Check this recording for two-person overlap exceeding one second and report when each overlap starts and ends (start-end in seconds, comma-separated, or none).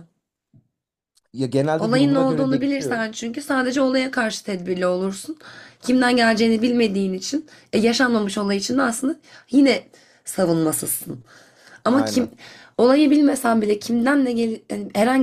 1.8-3.0